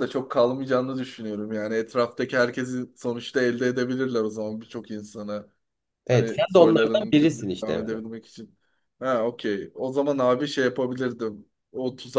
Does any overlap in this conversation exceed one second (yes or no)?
yes